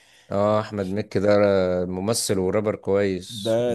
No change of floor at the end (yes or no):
no